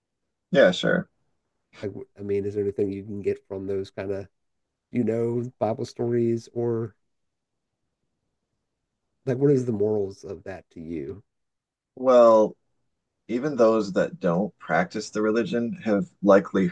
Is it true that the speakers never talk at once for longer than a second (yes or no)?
yes